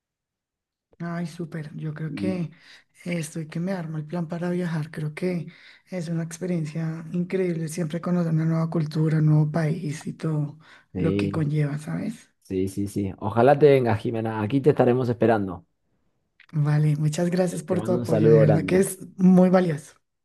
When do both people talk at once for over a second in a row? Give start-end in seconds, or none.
17.7-18.9